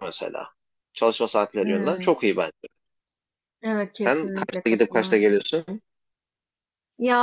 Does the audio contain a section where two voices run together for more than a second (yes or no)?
yes